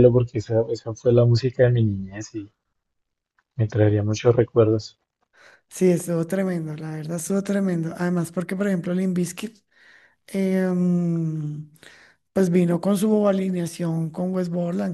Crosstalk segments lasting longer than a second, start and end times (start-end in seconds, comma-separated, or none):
none